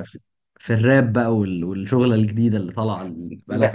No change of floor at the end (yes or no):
no